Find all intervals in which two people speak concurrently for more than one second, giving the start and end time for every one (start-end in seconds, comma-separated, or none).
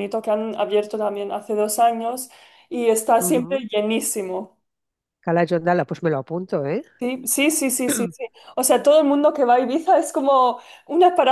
none